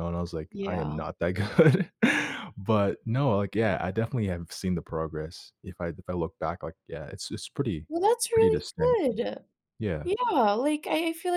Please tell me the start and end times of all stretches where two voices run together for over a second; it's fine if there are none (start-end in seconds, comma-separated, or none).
none